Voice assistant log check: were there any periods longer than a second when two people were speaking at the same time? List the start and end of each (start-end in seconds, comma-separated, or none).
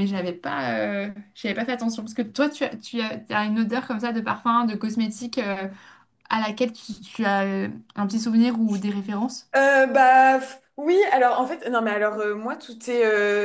none